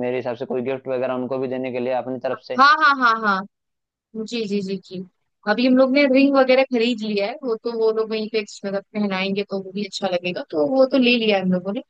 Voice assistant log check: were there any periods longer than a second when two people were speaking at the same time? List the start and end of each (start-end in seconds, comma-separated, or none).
none